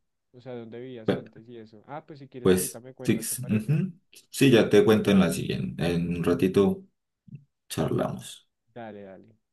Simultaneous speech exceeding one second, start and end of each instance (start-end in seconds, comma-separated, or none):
2.4-3.8